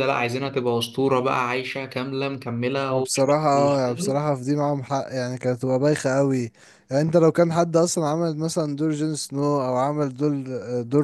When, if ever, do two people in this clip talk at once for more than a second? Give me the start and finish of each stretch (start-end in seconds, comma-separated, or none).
2.9-4.2